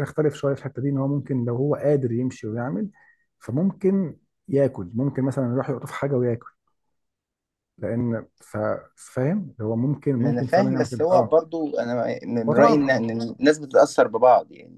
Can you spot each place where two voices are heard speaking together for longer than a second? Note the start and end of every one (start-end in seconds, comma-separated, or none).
10.2-11.5